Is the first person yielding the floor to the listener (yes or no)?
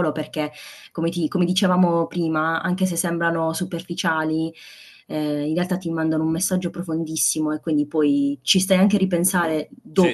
yes